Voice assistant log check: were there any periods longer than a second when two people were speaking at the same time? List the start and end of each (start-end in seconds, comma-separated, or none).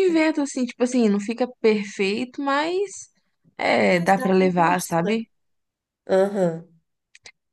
3.9-5.2